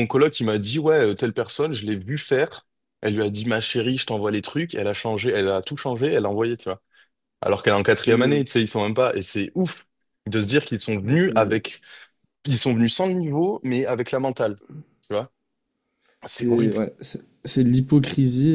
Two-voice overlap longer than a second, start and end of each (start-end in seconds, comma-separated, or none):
none